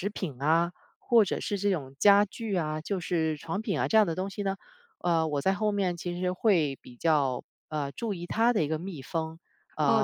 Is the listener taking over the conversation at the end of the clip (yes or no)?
yes